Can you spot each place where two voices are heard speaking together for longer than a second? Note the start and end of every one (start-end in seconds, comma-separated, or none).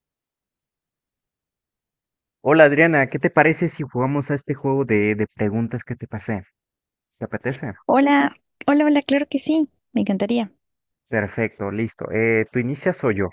none